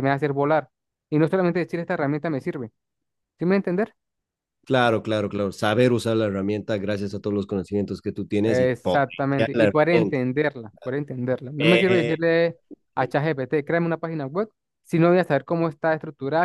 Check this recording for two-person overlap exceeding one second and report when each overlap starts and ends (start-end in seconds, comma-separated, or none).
8.4-10.2